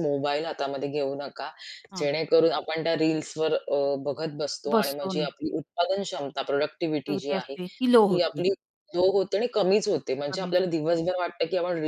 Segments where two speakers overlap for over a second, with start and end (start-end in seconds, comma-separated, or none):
7.1-8.4